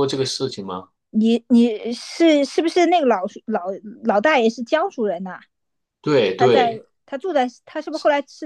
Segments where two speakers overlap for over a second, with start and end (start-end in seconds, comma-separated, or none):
none